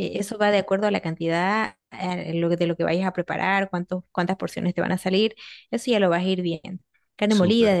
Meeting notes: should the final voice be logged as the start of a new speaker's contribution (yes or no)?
no